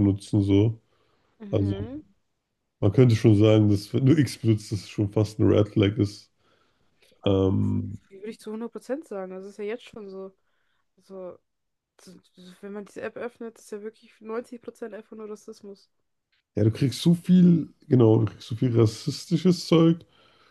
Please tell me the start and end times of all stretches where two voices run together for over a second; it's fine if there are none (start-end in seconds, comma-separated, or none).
none